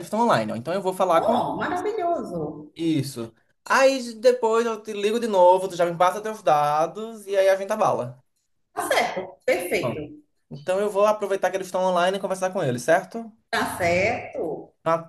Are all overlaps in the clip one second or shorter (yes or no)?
yes